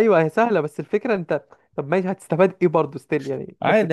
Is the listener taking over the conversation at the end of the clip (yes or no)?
yes